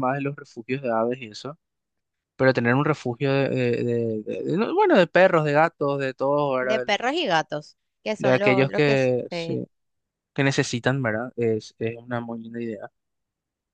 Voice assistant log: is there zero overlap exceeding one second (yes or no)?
no